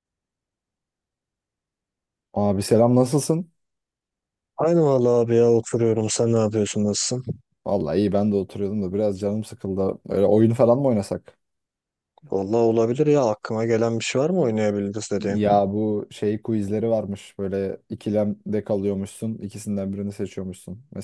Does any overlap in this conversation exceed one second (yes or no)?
no